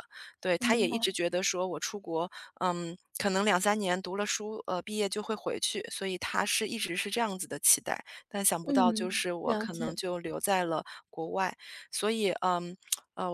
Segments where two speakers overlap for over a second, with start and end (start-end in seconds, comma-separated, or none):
8.6-9.9